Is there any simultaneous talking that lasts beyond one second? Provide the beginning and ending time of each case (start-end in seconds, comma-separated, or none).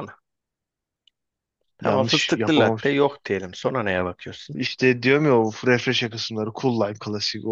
1.8-3.2